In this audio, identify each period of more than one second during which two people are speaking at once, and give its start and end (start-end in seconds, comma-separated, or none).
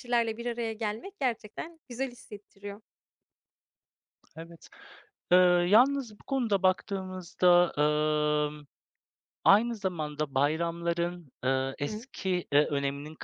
none